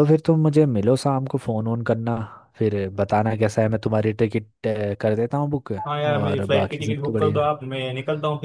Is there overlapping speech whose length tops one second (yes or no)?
yes